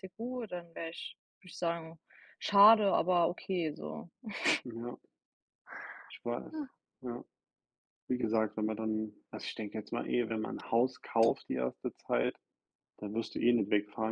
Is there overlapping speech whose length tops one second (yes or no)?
no